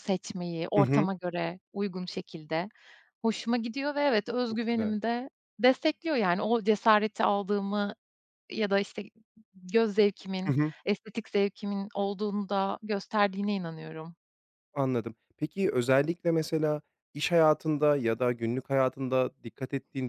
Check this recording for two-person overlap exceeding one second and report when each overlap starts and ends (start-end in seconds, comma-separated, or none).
none